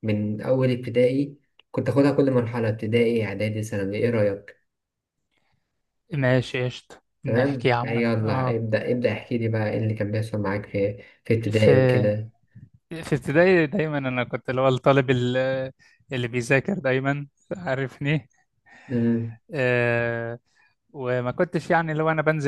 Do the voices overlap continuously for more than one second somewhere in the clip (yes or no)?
yes